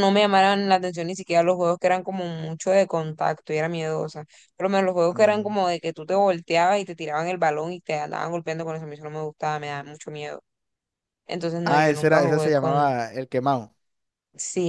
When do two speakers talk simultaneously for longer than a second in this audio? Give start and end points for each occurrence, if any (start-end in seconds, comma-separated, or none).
11.7-12.9